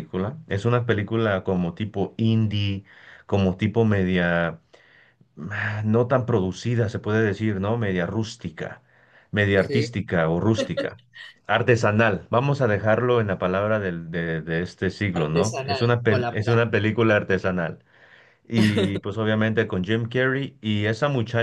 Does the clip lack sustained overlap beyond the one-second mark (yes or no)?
no